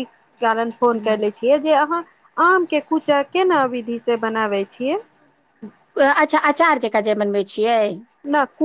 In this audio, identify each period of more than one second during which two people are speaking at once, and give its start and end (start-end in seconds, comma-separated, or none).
none